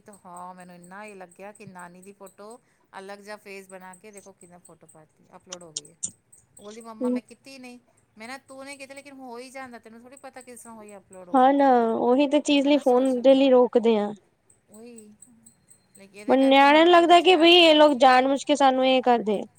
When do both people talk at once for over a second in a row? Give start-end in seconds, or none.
none